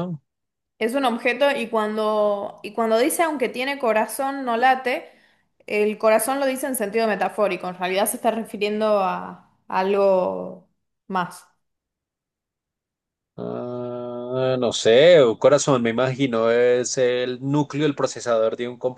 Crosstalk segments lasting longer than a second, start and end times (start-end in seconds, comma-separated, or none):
none